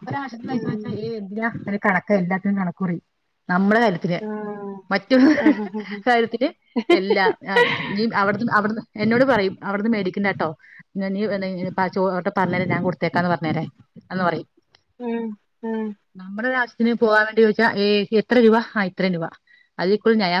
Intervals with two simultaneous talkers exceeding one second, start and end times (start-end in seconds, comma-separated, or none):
none